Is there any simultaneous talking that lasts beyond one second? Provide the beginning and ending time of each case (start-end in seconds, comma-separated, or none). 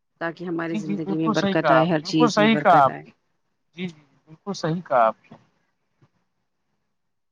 0.7-3.0